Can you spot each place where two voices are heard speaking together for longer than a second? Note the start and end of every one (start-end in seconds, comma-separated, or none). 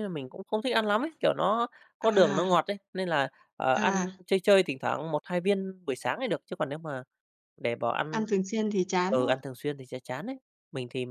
none